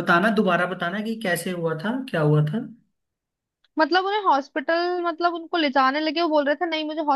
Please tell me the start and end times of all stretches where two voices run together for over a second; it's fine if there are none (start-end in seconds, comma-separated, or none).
none